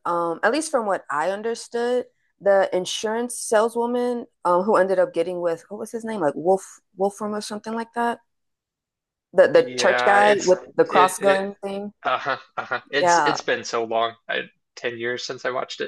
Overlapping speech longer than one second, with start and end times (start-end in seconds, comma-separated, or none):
9.6-11.4